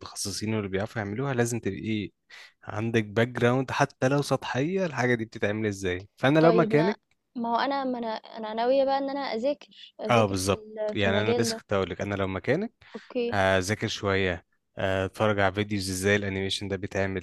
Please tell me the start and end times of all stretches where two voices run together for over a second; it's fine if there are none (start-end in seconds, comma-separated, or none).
10.1-11.6